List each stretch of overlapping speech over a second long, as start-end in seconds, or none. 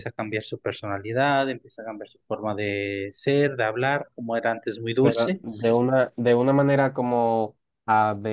none